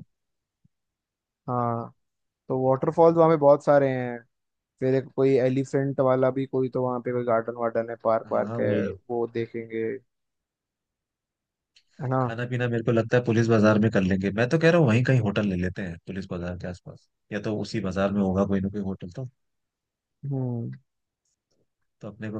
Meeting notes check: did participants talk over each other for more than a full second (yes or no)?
no